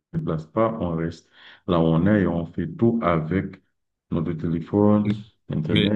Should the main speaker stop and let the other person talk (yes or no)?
yes